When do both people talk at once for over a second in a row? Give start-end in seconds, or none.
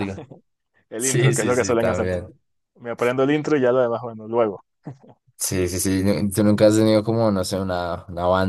1.0-2.3